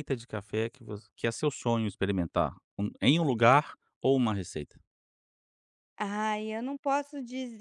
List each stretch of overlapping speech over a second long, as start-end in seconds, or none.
none